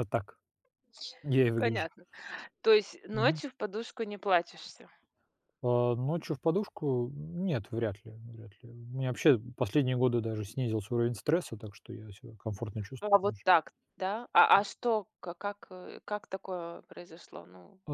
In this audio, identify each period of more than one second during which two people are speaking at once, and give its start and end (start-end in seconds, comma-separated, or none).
none